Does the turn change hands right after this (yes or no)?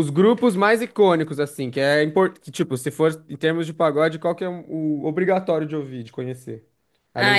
yes